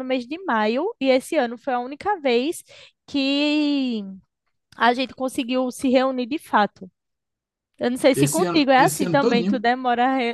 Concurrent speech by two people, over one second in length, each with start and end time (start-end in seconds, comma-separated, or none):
8.1-9.7